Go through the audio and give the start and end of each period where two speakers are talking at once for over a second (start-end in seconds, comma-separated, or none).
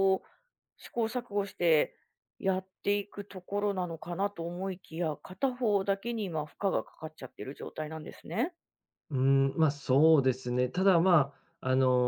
none